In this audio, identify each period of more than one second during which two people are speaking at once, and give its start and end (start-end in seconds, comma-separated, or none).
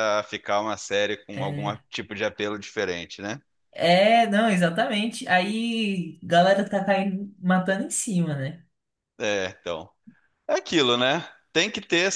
none